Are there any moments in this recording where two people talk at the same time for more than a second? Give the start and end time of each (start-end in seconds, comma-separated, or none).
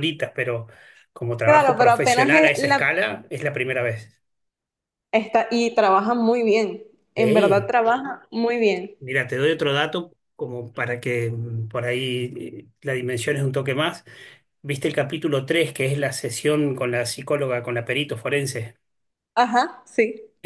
1.4-2.9